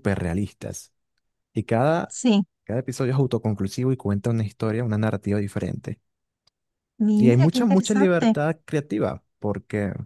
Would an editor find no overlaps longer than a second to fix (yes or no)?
no